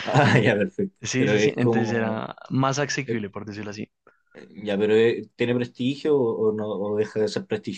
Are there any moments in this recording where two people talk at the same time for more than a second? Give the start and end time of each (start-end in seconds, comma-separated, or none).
1.0-2.2